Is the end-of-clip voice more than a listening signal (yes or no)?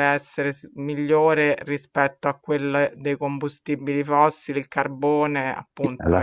yes